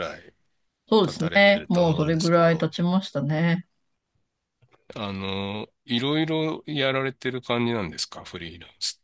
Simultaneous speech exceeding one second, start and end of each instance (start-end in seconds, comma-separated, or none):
1.0-2.7